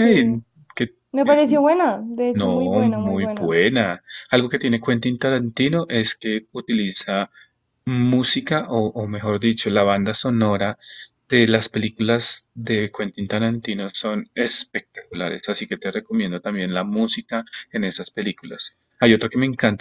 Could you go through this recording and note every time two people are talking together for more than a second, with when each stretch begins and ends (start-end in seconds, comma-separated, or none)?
2.3-3.5